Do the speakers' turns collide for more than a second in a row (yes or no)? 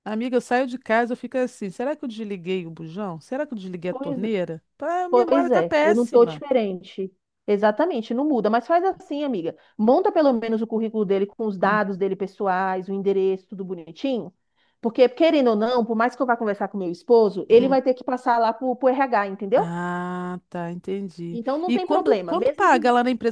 yes